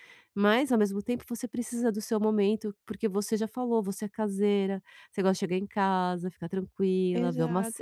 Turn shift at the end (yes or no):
yes